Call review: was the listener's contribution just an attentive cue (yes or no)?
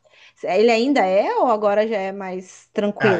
no